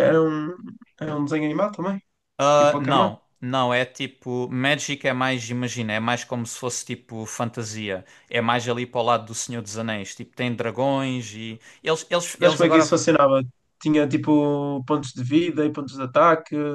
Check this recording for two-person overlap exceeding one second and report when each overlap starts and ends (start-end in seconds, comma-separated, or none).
none